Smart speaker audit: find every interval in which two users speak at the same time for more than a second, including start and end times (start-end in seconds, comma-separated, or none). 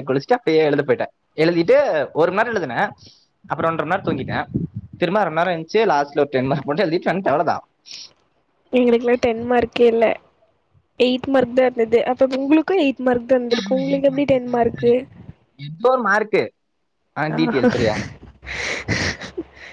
13.5-14.9